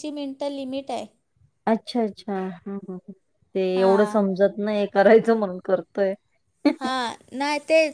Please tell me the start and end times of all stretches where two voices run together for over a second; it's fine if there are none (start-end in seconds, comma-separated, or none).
none